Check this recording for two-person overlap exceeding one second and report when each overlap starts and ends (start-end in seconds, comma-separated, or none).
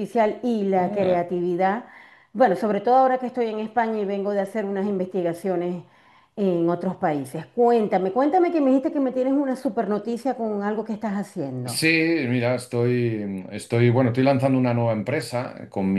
none